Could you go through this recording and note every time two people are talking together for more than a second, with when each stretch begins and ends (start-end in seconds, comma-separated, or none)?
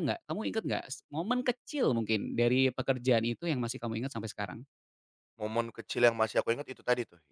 none